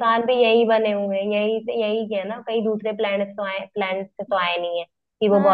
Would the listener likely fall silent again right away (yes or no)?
yes